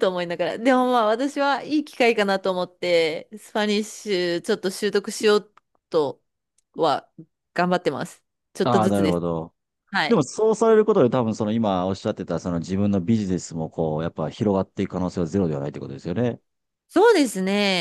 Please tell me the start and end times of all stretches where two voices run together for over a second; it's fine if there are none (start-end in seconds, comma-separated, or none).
none